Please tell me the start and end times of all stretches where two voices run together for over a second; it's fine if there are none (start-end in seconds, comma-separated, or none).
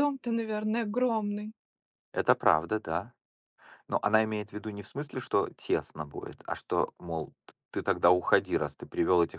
none